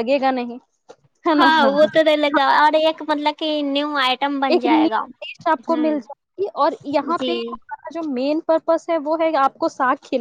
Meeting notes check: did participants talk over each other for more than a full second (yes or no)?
no